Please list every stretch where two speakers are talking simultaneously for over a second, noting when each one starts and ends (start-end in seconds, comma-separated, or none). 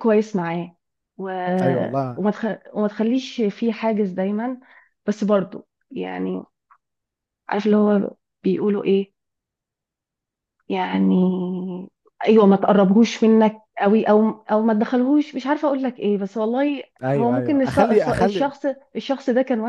17.0-18.5